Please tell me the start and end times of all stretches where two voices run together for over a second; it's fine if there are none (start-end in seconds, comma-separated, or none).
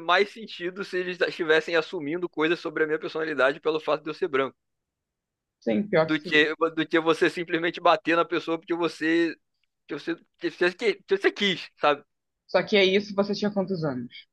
none